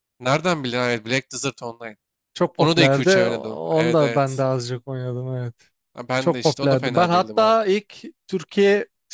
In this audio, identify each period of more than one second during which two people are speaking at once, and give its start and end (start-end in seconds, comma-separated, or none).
2.6-4.5, 6.2-7.6